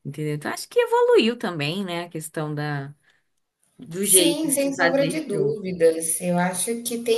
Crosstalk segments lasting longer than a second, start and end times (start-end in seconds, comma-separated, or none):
4.0-5.6